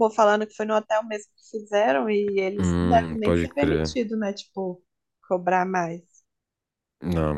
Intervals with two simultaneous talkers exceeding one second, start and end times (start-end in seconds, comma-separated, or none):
2.6-3.9